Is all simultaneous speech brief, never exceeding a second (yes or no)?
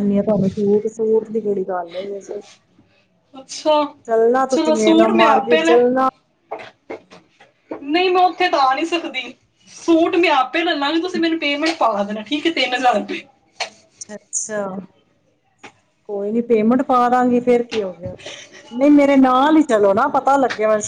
no